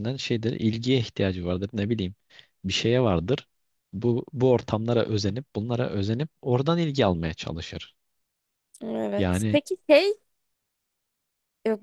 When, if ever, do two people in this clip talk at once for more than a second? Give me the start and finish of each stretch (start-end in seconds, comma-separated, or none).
none